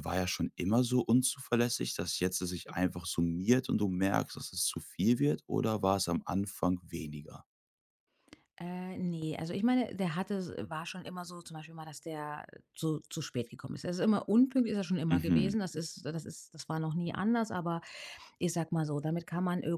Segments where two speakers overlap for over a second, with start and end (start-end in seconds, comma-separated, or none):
none